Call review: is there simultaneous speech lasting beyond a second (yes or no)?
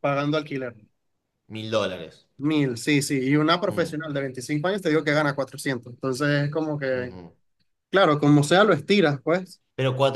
no